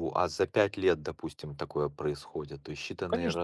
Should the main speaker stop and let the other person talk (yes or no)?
yes